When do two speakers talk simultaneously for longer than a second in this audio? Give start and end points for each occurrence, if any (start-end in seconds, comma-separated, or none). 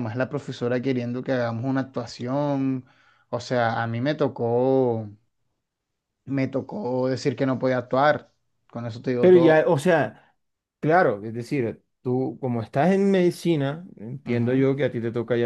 none